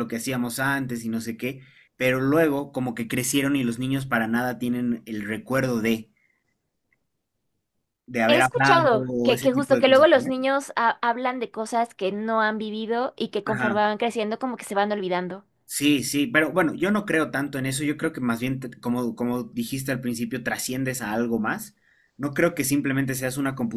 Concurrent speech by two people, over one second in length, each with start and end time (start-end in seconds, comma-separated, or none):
8.3-10.3